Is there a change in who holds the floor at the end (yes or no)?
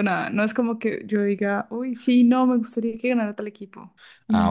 yes